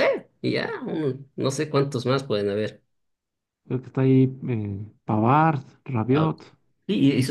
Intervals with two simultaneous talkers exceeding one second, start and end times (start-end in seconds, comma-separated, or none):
none